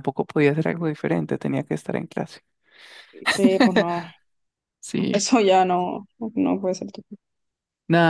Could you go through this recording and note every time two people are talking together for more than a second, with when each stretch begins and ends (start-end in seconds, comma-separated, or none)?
none